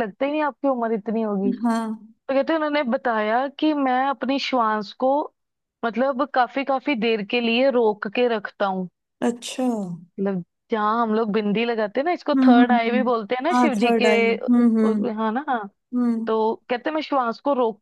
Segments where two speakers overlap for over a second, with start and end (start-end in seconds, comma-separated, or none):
12.3-14.1